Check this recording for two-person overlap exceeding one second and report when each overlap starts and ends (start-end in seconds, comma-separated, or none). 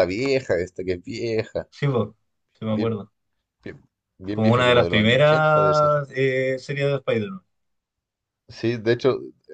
4.3-5.9